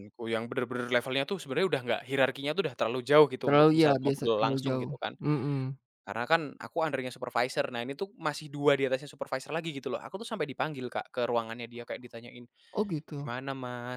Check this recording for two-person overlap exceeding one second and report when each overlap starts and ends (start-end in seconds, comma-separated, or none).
3.4-5.2